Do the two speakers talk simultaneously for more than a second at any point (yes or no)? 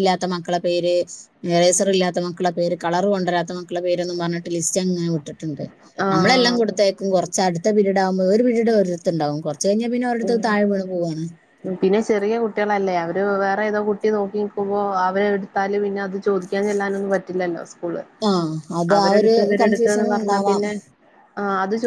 no